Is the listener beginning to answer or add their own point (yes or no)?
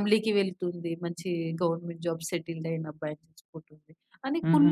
no